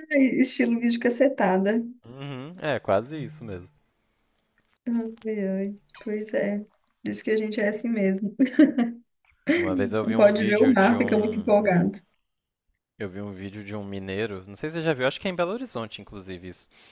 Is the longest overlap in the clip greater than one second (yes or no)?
yes